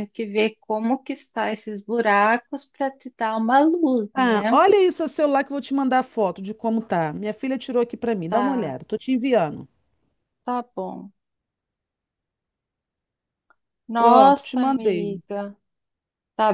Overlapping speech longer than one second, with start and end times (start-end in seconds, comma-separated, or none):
14.0-15.2